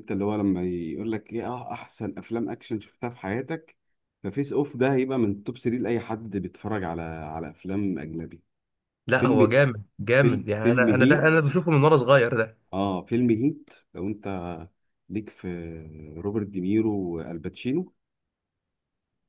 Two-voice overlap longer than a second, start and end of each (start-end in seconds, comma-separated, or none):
10.2-11.4